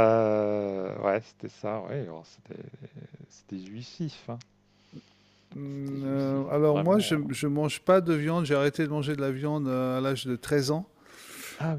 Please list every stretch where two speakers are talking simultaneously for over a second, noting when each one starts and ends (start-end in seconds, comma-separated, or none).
5.7-7.3